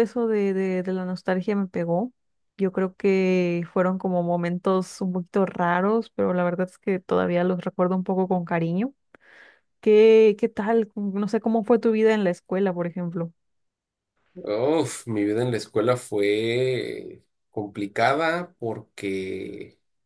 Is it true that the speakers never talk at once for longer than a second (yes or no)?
yes